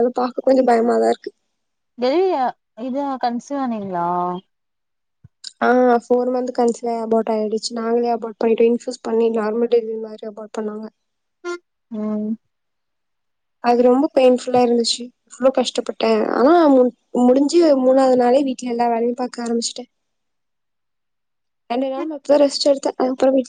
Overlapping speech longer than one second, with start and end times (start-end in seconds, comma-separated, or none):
none